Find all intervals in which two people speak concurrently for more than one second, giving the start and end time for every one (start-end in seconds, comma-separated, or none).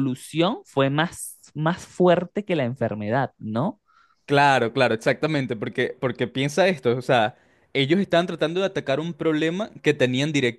none